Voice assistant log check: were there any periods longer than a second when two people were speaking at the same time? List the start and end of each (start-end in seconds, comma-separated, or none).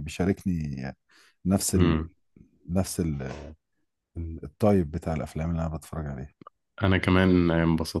none